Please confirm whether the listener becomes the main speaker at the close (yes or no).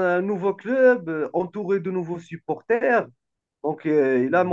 no